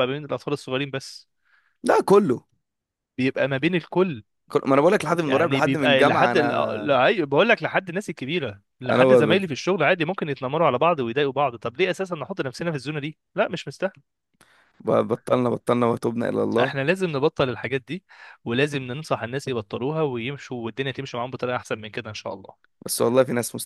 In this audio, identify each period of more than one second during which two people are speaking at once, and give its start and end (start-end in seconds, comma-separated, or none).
5.2-6.9